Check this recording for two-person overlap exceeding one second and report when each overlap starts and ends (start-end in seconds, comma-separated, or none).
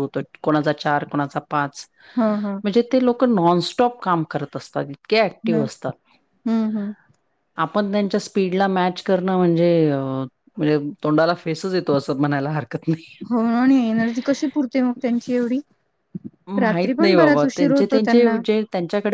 16.6-18.3